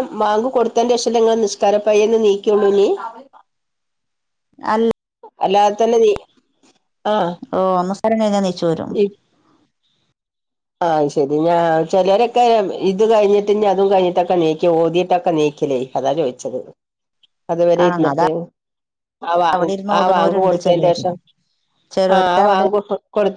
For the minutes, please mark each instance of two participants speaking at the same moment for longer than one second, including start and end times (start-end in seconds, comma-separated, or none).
19.6-21.0